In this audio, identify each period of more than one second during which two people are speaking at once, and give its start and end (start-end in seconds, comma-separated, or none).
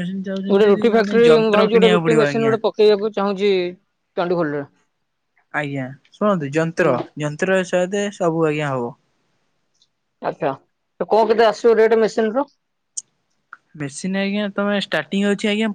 0.5-2.5